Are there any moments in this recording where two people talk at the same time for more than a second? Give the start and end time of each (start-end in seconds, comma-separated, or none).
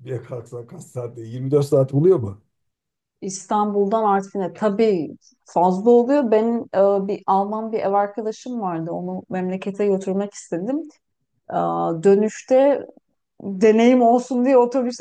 none